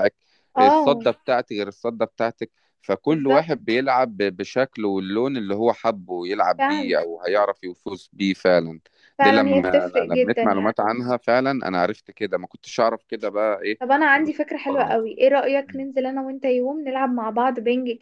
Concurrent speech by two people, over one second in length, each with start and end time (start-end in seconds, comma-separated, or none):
9.2-10.8